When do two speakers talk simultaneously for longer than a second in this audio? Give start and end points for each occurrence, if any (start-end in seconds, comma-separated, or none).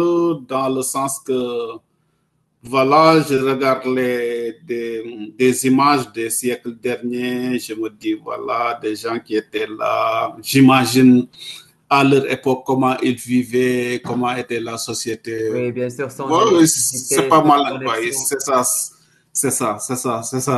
16.2-18.3